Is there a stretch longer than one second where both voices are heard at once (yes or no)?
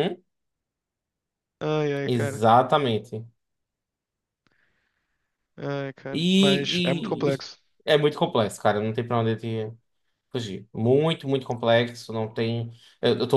yes